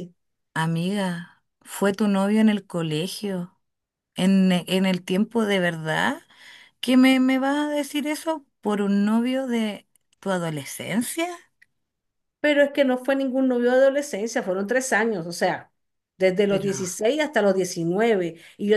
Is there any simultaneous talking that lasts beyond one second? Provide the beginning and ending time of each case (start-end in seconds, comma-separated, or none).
none